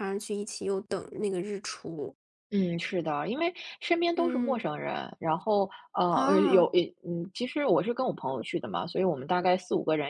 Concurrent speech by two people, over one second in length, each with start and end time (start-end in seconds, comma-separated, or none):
none